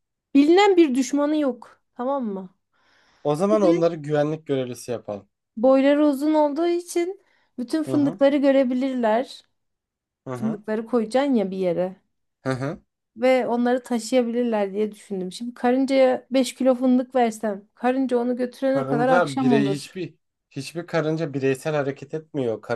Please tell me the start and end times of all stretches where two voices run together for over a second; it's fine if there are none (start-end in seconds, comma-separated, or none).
18.7-20.0